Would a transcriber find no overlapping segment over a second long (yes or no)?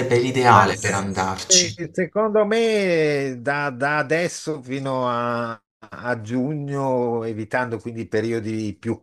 no